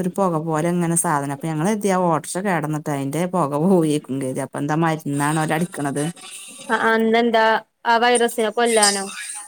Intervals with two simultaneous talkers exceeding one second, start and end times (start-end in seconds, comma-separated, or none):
none